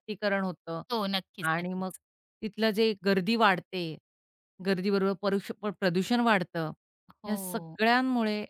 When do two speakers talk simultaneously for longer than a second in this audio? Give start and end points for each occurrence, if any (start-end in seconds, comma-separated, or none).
none